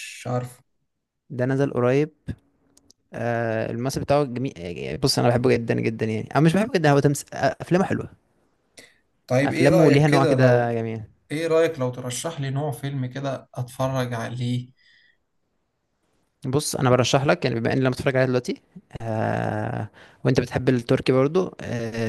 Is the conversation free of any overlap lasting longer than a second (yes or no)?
no